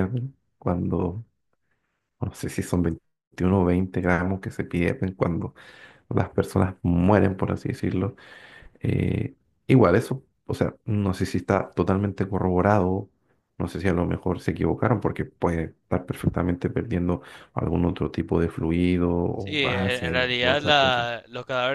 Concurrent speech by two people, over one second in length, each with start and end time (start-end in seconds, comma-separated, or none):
19.4-21.1